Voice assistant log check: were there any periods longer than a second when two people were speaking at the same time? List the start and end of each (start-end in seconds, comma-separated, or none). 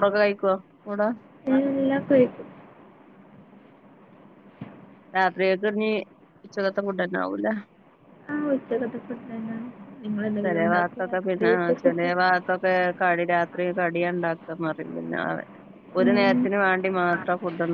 10.4-12.1